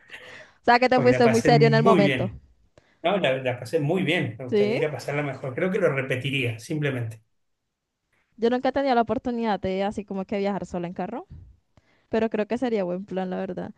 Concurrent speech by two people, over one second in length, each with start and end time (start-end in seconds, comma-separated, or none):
0.9-2.3